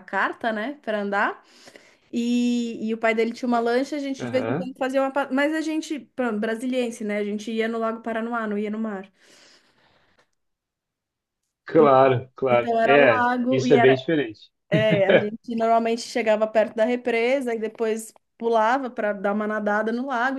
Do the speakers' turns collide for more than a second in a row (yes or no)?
yes